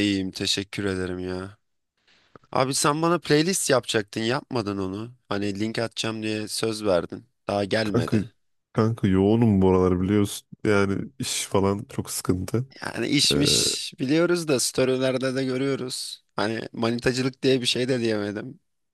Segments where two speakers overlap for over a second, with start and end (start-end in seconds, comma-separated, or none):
none